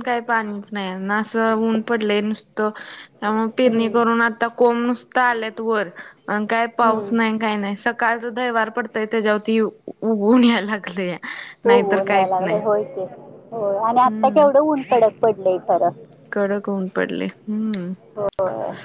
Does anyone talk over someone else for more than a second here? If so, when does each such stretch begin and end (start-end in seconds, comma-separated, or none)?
none